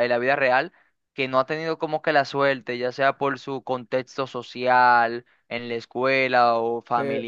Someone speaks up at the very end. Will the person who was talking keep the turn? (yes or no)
no